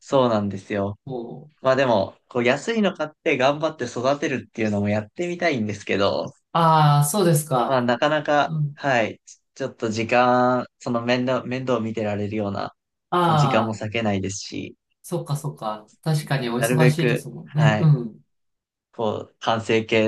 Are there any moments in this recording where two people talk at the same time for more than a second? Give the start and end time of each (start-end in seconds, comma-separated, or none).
16.6-17.9